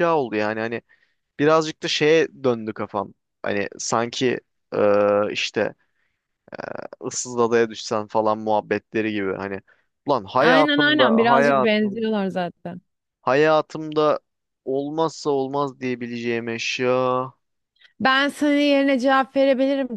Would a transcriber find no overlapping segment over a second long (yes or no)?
no